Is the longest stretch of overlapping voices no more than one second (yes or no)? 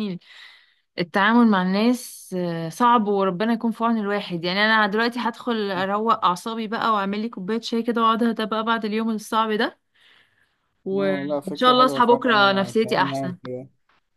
no